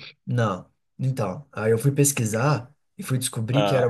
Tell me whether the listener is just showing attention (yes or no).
yes